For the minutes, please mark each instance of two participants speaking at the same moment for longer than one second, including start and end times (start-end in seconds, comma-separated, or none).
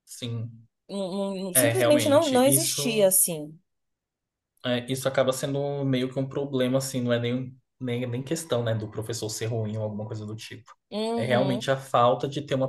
1.5-3.1